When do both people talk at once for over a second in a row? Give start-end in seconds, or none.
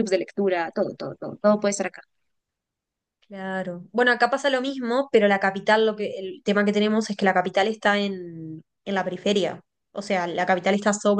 none